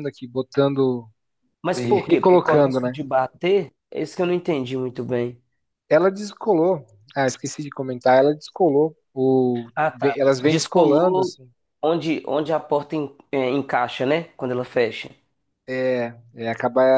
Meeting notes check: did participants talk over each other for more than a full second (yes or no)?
yes